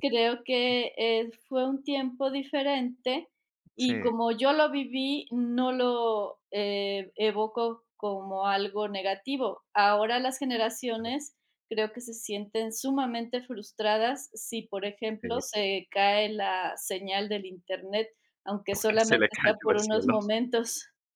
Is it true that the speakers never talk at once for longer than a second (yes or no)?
no